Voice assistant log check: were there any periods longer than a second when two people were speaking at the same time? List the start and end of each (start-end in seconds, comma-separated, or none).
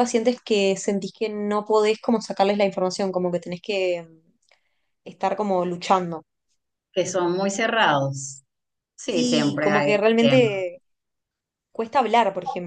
9.0-10.5